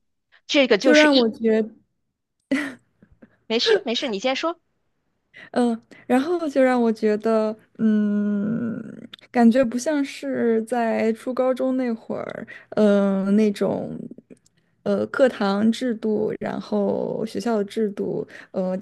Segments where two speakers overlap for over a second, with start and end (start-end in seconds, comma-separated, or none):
none